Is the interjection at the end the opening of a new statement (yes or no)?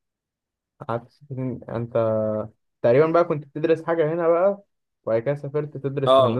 yes